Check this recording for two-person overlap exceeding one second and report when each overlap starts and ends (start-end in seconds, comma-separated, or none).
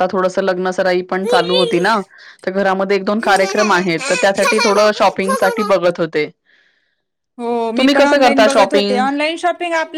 7.8-9.0